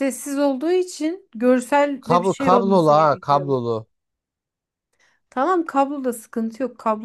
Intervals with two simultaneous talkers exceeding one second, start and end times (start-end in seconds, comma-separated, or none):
2.0-3.6